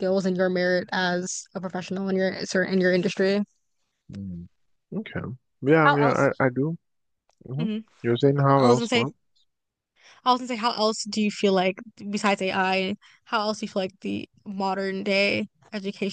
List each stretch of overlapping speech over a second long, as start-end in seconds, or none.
none